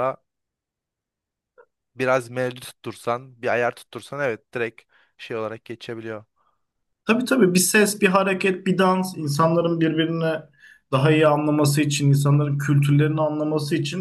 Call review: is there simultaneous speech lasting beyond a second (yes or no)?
no